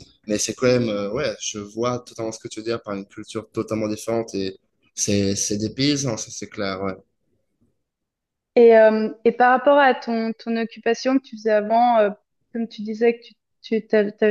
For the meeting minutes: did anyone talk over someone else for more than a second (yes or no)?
no